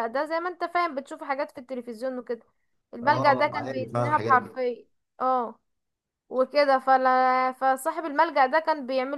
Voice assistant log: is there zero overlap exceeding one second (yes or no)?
no